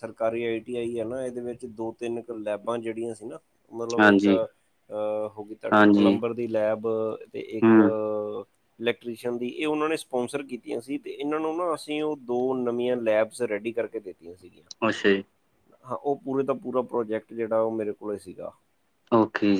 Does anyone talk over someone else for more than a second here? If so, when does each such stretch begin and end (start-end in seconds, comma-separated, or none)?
none